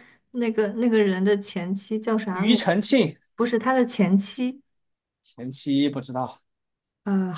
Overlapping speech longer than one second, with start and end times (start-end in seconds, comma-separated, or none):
none